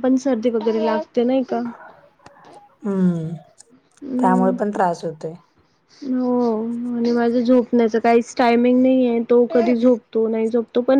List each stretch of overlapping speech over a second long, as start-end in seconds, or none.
none